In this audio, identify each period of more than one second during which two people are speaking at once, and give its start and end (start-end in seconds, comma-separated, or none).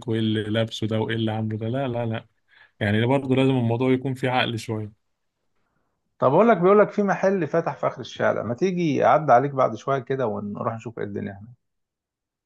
none